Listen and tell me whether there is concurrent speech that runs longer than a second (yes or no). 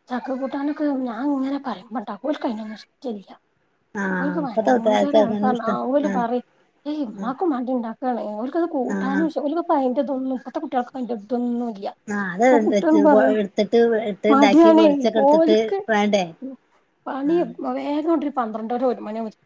yes